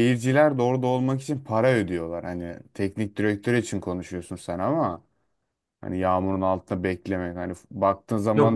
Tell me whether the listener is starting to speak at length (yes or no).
yes